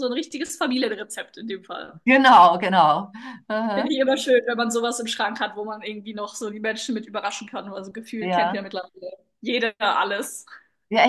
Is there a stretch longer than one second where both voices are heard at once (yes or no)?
no